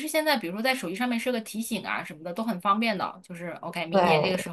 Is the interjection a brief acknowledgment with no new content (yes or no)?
yes